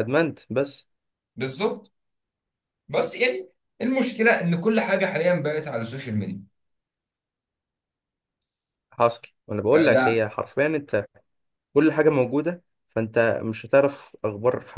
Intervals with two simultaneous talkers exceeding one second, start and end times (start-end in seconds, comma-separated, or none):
none